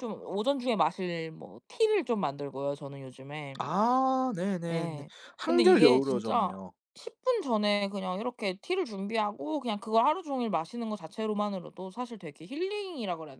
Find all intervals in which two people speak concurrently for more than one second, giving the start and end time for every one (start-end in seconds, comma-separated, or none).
4.7-6.6